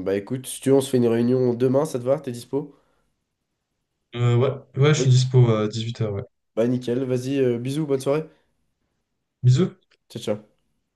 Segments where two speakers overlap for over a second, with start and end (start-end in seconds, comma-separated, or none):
none